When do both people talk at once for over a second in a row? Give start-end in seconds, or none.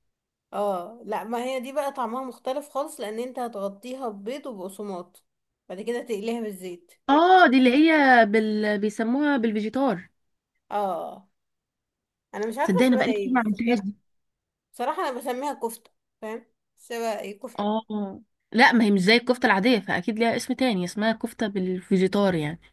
12.6-13.8